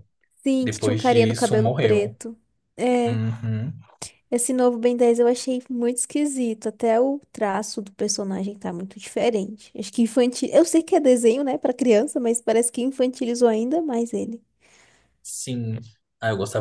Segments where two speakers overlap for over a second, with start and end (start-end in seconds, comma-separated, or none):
0.6-2.2